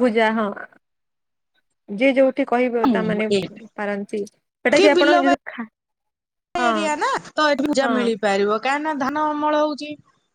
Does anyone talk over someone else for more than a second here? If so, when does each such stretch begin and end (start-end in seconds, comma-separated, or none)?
none